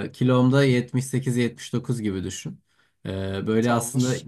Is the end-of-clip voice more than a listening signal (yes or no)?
no